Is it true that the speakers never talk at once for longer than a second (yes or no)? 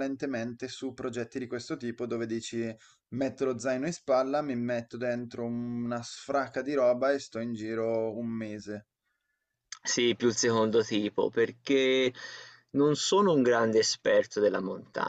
yes